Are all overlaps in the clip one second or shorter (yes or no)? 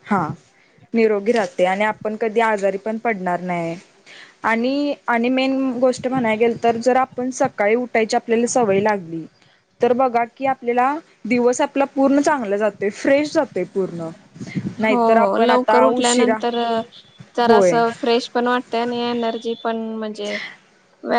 no